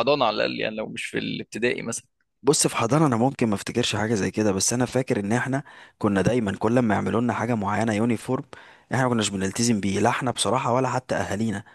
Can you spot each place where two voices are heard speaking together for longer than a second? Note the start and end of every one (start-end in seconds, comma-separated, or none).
none